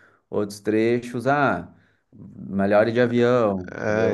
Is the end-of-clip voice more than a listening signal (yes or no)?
yes